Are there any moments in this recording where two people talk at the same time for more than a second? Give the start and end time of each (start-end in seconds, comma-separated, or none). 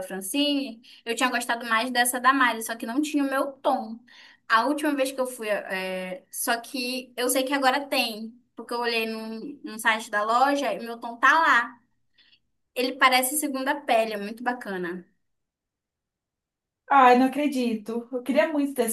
none